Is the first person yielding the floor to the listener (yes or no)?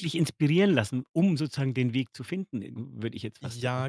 yes